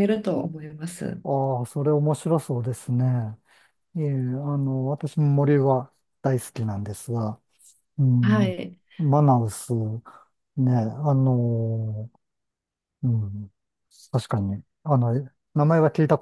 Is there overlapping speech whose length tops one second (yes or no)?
no